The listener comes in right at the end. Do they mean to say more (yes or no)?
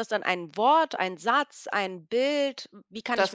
yes